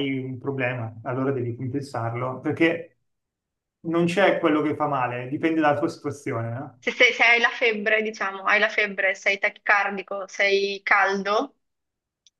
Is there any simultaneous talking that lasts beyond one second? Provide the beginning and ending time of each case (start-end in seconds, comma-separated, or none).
none